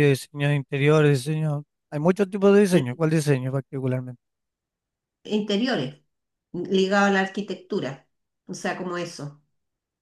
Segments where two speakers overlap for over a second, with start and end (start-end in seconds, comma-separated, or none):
none